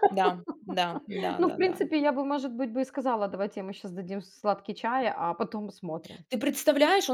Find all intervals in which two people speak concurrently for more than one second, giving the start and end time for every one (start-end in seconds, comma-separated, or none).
none